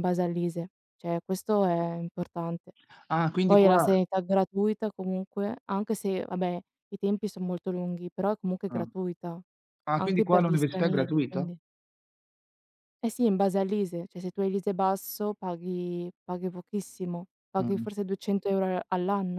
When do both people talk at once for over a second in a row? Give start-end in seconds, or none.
10.0-11.5